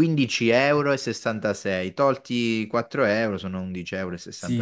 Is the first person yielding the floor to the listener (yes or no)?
yes